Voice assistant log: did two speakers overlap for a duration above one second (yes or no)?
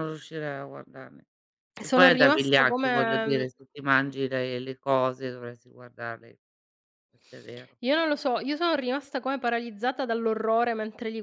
yes